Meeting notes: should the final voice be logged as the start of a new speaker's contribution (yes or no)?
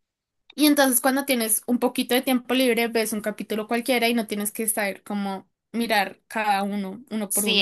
yes